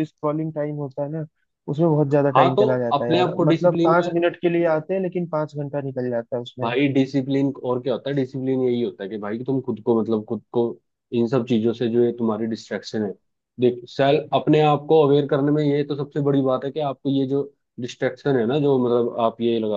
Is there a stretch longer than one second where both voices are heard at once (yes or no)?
yes